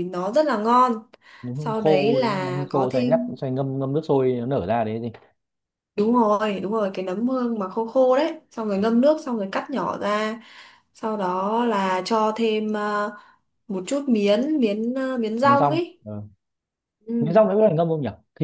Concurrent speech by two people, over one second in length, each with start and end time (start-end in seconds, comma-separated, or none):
1.5-3.3